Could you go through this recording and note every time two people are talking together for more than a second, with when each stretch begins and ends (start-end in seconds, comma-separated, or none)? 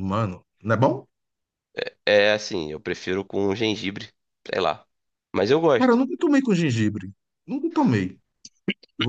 none